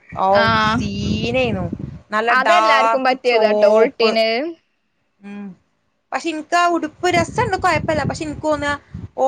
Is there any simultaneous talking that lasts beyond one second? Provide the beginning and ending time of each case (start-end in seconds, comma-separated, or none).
2.4-4.1